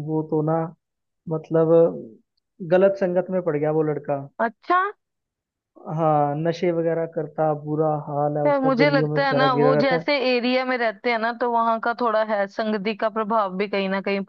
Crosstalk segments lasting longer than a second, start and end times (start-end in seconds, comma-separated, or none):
8.4-10.1